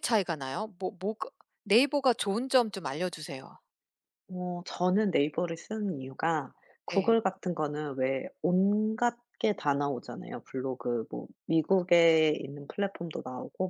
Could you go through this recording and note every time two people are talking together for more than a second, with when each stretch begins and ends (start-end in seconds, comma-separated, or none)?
none